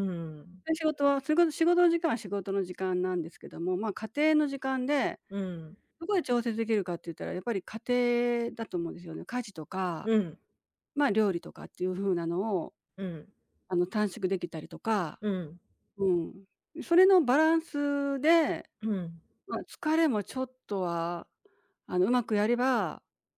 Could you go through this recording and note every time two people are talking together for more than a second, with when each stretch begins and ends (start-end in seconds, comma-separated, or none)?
none